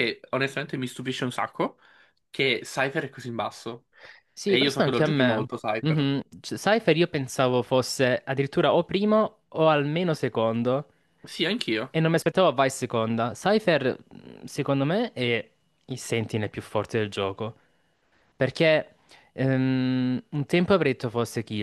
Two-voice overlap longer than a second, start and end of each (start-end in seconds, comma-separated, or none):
4.4-6.1